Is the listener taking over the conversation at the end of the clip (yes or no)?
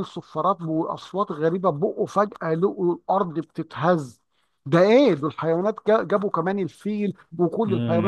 yes